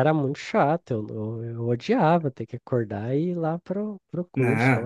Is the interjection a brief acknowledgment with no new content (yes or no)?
no